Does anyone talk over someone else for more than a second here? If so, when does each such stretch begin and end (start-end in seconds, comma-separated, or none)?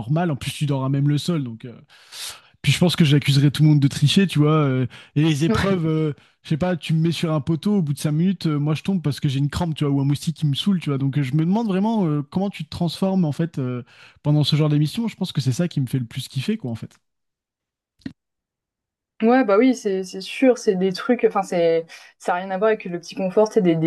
none